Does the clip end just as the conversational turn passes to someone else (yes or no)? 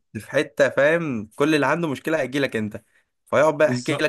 no